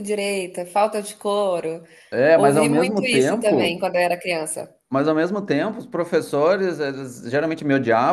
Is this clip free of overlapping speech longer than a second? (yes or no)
no